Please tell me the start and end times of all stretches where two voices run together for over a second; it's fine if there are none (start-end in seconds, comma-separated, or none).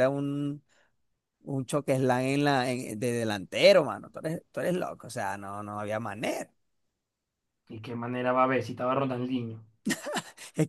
none